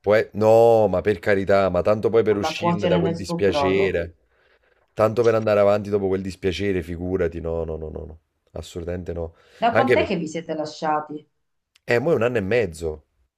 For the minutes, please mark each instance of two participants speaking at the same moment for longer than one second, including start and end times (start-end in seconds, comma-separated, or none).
2.3-4.0